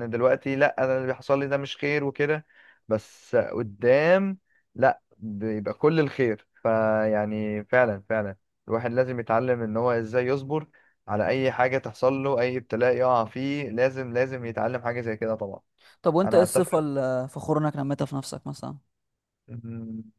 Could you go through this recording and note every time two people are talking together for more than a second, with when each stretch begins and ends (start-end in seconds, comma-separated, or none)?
none